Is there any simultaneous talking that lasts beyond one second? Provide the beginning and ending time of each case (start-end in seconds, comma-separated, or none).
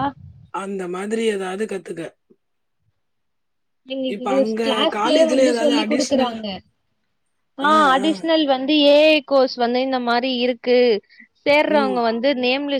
4.1-6.3